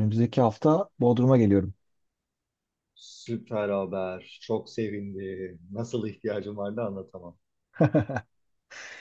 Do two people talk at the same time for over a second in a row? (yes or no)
no